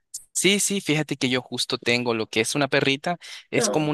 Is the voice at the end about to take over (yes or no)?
no